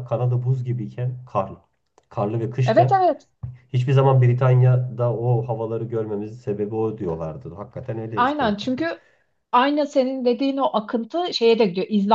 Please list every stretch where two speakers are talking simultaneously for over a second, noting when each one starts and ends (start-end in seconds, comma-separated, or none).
none